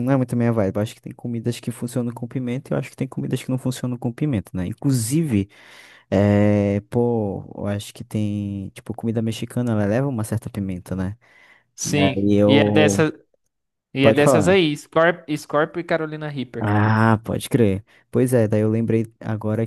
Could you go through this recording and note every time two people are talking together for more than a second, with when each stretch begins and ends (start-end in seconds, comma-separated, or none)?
11.8-13.0